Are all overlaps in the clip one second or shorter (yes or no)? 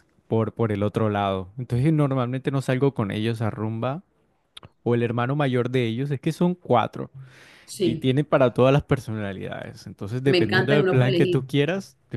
no